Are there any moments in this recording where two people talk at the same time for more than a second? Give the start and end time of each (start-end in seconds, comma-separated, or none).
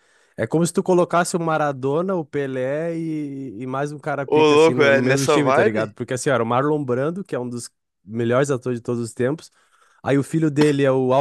4.2-5.9